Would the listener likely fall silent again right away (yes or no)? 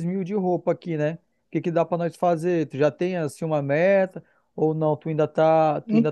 no